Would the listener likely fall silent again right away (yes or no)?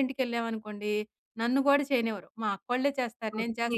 no